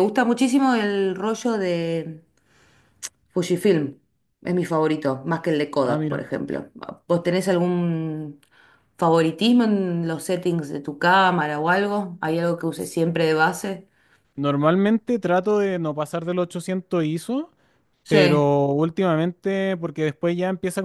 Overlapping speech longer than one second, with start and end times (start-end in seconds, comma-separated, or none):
none